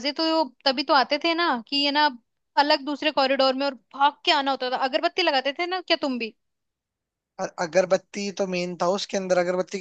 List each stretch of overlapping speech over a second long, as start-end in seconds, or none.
none